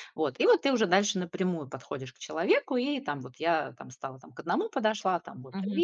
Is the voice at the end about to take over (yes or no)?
yes